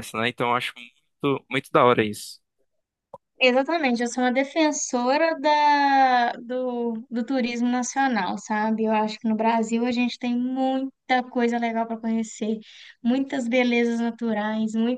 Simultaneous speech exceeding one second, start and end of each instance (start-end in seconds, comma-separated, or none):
none